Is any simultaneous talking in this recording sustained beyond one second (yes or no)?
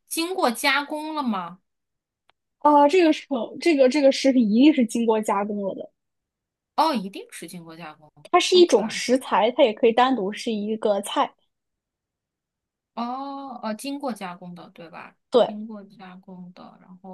no